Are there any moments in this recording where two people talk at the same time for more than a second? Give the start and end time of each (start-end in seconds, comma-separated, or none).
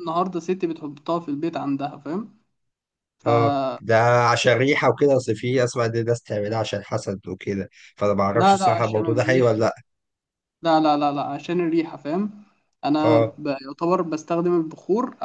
8.3-9.6